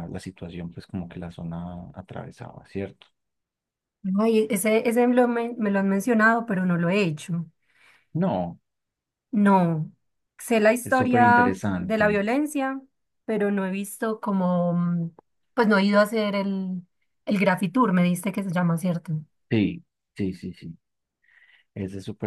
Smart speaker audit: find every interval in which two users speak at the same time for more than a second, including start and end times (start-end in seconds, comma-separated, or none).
10.8-12.2